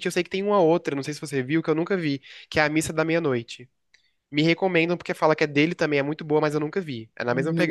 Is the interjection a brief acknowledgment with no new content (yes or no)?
no